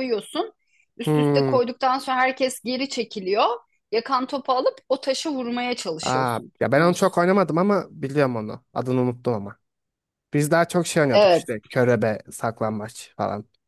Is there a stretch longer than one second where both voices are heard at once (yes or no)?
yes